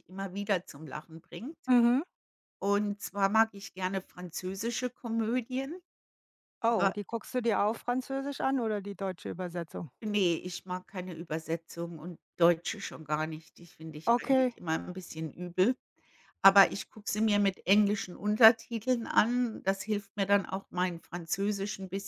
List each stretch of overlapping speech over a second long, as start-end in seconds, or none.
none